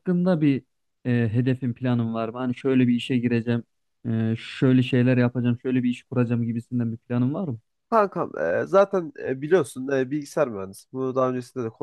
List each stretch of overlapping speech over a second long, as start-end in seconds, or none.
none